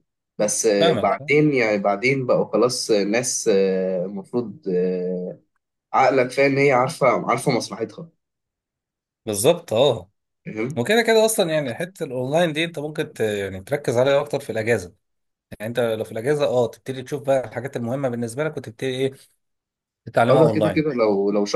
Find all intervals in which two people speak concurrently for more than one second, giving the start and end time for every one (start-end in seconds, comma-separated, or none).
none